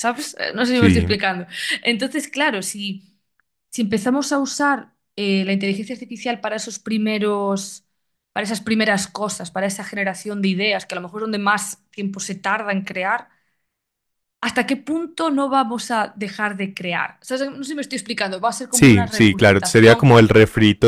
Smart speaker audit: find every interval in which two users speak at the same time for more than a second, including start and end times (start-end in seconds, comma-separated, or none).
18.7-20.1